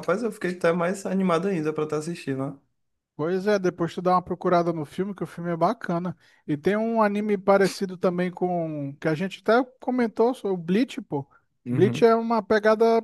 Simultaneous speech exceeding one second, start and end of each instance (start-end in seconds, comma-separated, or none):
none